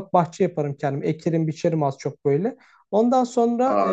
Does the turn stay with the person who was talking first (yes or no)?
no